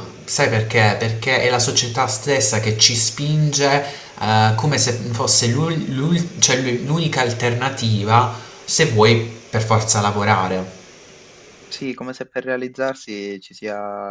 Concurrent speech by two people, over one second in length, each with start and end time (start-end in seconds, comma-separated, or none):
none